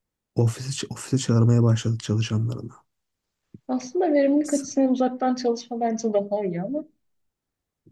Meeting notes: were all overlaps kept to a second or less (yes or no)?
yes